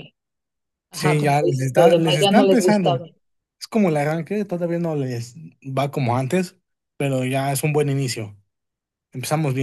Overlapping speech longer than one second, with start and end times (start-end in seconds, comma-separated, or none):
0.9-3.0